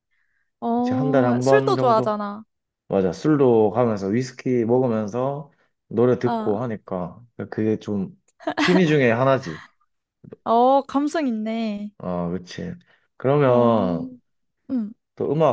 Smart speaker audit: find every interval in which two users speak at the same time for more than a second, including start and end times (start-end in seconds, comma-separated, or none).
0.8-2.2